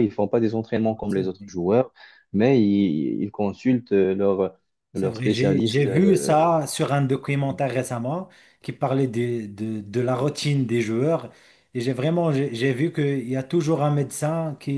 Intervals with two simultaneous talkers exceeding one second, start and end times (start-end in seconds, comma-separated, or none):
4.9-6.5